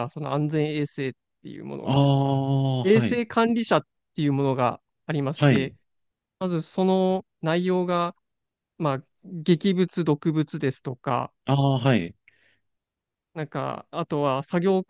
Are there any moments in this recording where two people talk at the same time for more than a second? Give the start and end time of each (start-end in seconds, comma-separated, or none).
none